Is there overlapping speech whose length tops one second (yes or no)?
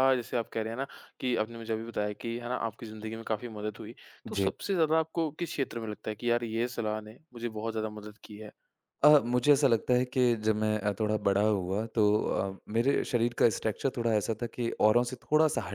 no